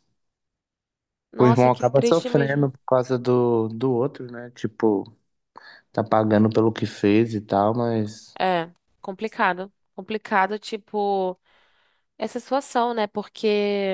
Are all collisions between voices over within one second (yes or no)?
no